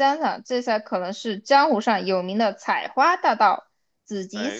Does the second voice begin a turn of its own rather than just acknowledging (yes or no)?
no